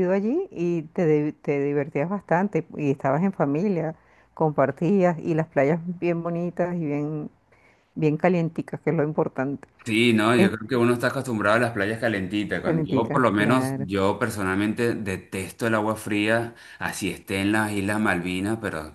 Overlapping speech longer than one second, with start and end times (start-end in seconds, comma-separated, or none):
12.6-13.9